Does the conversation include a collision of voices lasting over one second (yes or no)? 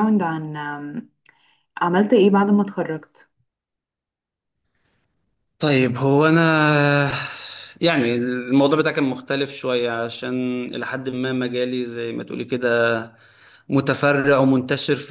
no